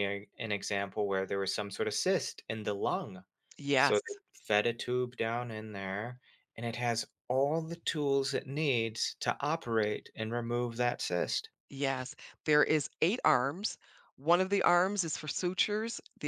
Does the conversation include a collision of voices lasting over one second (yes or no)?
no